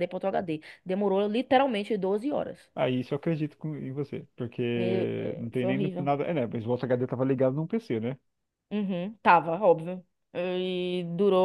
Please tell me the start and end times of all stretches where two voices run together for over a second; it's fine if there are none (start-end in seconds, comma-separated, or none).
4.7-6.1